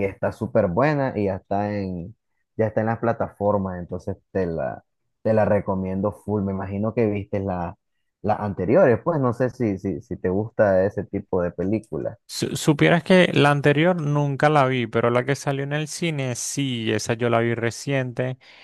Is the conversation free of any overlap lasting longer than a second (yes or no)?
yes